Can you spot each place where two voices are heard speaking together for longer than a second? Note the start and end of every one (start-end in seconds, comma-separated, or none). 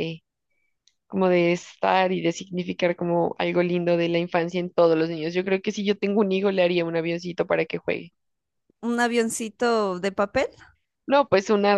none